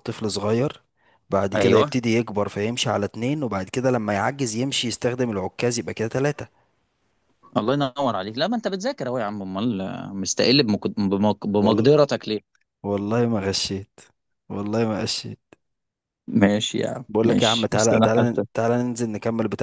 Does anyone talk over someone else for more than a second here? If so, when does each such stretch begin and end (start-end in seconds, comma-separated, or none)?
17.1-18.4